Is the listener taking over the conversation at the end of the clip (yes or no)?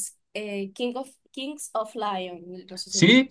yes